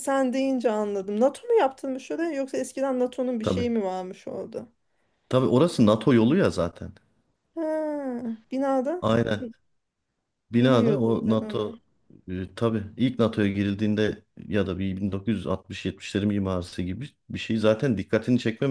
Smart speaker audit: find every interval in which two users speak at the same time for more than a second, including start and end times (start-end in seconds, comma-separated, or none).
10.6-11.8